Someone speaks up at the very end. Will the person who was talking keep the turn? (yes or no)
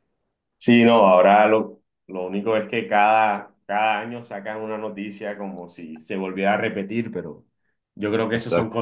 yes